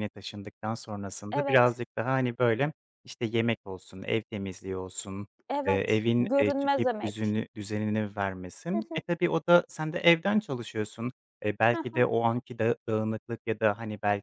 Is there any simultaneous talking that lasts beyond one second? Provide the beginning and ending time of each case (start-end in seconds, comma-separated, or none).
5.7-7.4